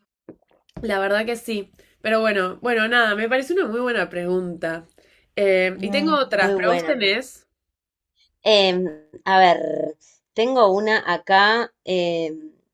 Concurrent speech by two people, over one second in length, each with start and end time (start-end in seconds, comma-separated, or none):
5.8-7.0